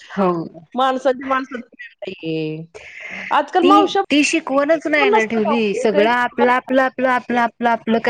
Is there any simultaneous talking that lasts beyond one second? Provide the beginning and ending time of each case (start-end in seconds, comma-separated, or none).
5.0-6.4